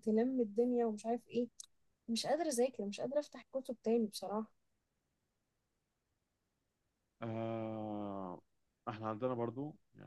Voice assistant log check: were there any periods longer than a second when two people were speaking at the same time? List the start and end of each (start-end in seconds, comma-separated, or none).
none